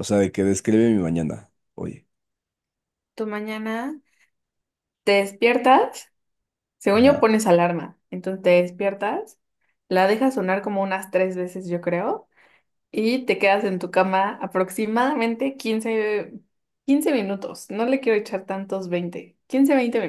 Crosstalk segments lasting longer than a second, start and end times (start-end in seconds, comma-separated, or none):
none